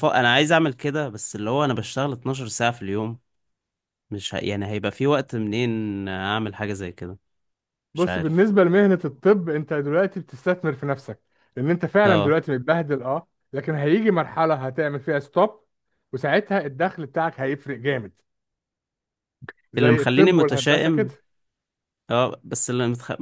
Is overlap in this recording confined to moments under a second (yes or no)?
no